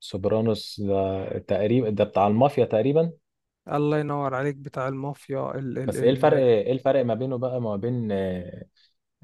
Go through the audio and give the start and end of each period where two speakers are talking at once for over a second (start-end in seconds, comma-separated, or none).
none